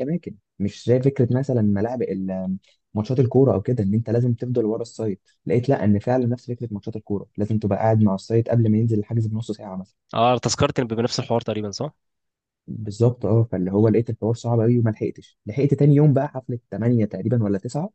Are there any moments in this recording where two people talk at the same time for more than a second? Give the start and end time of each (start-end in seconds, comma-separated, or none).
none